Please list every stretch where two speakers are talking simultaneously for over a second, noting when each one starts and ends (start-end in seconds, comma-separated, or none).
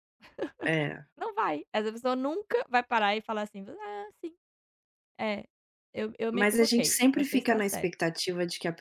6.3-7.9